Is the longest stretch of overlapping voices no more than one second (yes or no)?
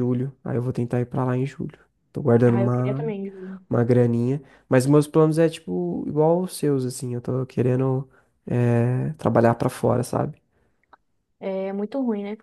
yes